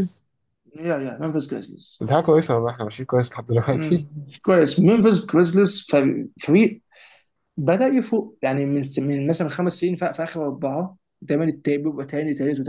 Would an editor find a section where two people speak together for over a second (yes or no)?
no